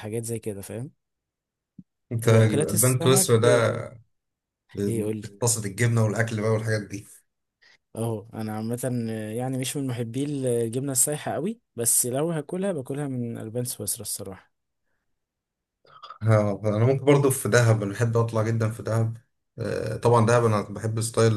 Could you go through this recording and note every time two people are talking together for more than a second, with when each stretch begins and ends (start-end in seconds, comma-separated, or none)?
2.2-3.5